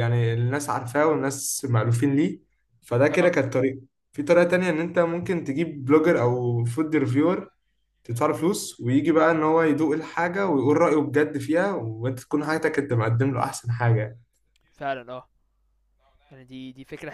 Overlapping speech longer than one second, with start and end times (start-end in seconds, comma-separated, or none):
none